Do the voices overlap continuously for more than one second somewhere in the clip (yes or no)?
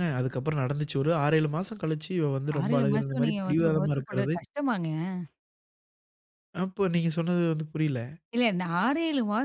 yes